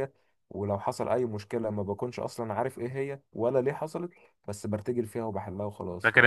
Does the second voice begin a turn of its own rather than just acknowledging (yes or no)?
yes